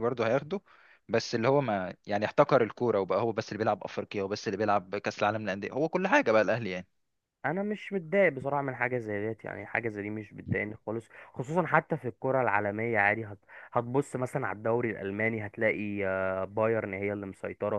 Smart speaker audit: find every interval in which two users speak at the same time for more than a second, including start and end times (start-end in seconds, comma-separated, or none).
none